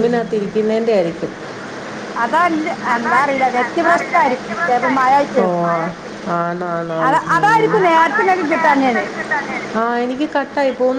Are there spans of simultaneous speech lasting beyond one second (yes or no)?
no